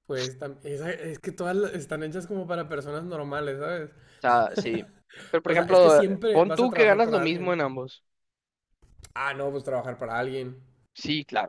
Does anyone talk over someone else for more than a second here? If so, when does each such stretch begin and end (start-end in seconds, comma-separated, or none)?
5.4-7.5